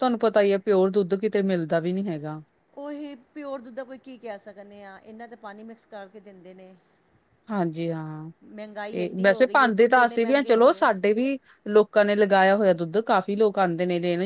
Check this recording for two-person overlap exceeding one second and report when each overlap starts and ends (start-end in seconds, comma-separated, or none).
8.9-10.8